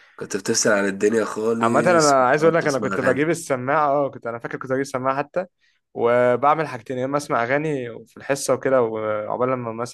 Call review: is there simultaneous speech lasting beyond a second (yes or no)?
yes